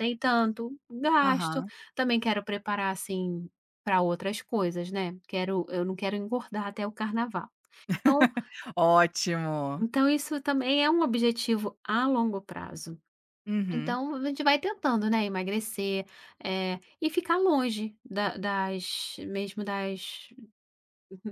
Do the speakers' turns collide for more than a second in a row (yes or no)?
no